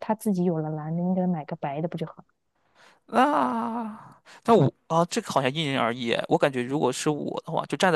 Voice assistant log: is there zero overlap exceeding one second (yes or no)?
yes